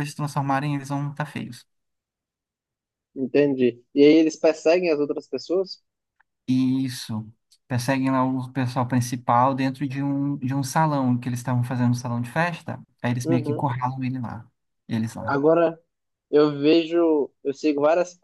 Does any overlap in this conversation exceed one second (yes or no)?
no